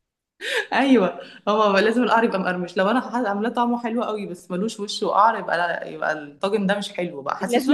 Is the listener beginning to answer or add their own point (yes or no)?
yes